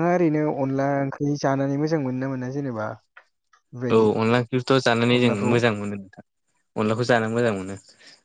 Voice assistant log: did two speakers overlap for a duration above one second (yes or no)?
no